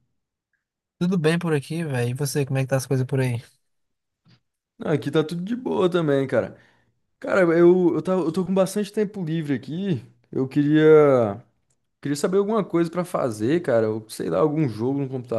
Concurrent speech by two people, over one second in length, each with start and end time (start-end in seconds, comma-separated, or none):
none